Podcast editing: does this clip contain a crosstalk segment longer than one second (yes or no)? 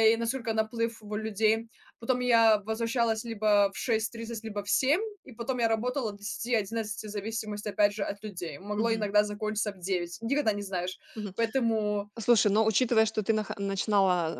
no